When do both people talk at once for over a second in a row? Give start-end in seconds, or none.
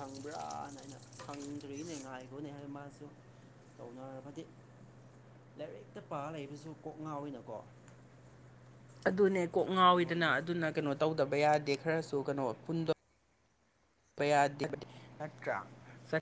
none